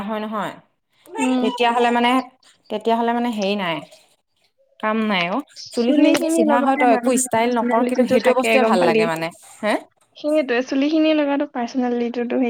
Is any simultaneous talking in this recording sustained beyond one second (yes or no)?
yes